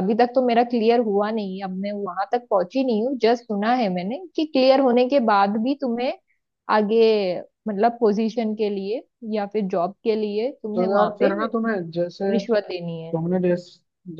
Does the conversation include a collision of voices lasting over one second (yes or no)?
no